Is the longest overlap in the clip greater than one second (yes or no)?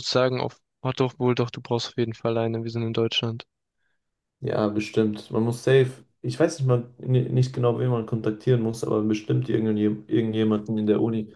no